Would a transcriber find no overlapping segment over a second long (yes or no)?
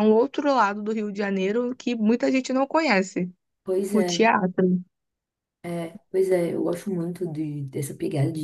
yes